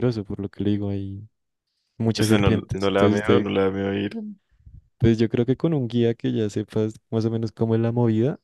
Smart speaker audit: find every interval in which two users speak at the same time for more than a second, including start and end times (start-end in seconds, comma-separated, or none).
2.2-3.6